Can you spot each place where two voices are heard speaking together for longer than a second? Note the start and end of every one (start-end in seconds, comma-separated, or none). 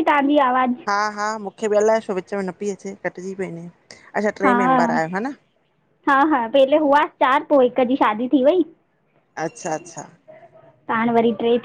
none